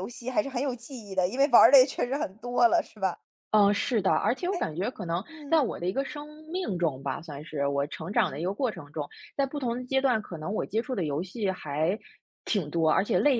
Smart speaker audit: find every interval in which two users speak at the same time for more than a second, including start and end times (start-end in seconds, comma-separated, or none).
none